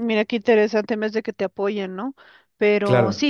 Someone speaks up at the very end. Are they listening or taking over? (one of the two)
listening